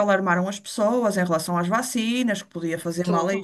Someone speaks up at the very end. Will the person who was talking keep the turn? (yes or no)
yes